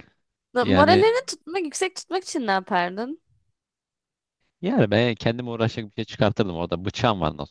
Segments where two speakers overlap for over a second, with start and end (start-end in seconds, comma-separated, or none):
none